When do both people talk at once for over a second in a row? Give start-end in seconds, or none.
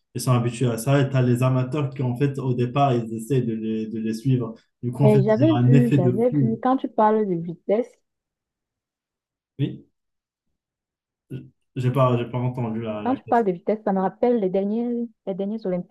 5.0-6.6